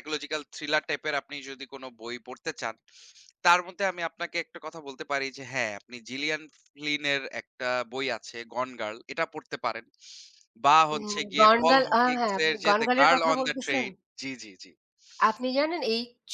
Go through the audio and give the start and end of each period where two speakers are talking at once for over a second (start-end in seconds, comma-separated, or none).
10.9-13.8